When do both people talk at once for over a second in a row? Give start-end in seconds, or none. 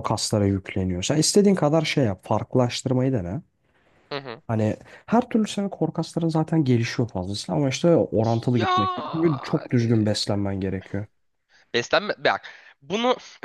8.6-9.9